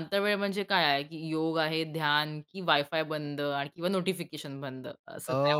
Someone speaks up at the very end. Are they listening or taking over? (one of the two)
taking over